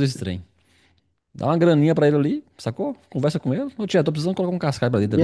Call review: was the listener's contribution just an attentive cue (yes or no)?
no